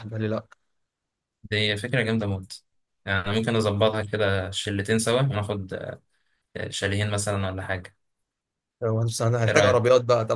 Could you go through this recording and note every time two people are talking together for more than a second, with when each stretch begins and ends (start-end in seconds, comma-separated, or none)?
none